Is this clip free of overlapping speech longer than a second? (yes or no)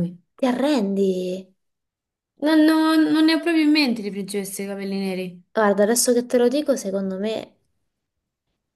yes